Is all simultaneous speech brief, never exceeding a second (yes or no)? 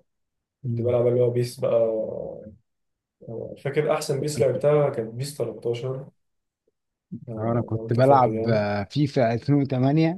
no